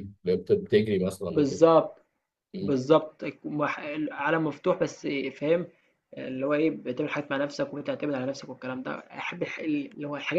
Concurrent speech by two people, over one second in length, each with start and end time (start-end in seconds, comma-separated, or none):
none